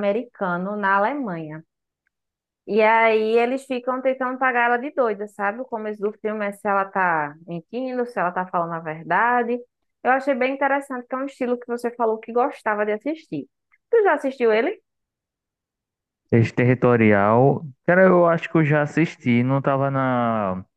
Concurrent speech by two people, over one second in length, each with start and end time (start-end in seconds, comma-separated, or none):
none